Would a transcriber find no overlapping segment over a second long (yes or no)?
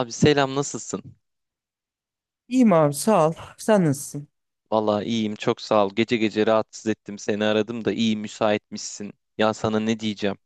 yes